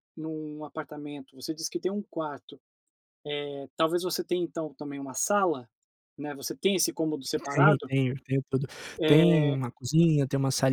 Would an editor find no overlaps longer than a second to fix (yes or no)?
yes